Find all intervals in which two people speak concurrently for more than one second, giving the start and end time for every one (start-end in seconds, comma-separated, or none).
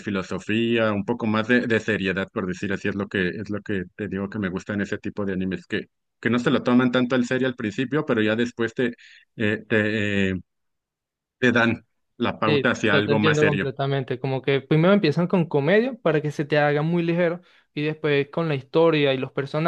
12.5-13.7